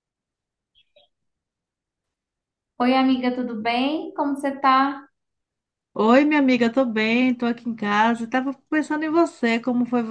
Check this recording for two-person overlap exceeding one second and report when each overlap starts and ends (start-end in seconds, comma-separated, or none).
none